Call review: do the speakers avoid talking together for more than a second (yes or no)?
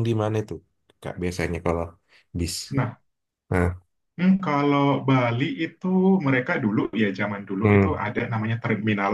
yes